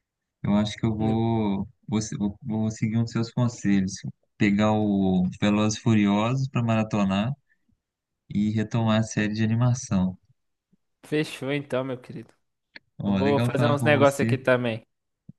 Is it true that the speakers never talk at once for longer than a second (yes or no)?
no